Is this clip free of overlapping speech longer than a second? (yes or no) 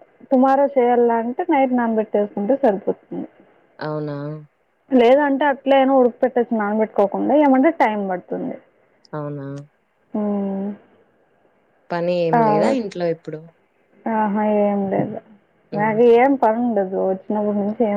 yes